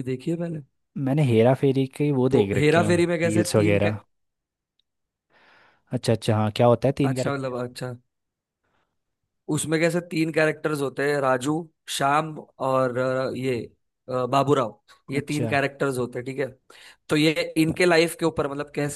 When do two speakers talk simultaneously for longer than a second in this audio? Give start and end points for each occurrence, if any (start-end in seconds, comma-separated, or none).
2.3-3.9